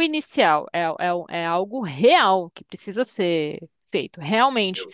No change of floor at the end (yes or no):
yes